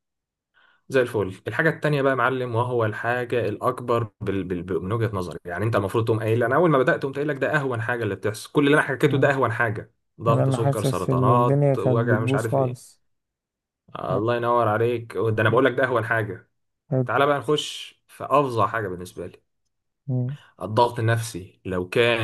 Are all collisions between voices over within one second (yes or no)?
no